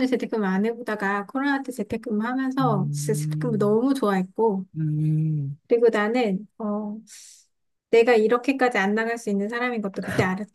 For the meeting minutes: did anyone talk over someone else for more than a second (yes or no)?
yes